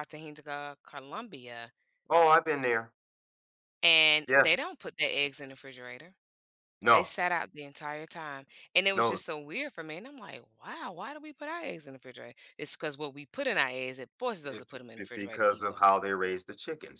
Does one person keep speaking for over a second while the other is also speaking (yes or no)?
yes